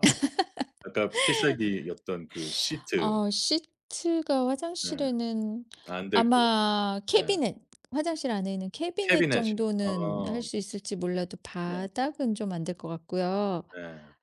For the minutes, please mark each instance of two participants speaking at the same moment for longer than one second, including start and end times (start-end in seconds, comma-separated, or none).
9.0-10.4